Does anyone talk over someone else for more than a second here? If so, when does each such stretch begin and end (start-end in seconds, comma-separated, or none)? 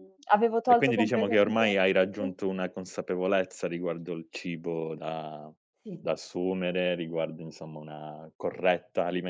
0.6-2.3